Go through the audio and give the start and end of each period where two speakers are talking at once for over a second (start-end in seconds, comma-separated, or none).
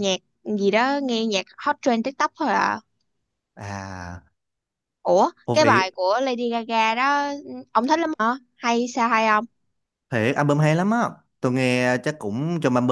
none